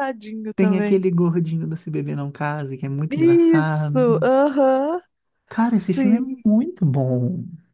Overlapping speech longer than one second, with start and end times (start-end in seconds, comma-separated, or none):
3.1-4.3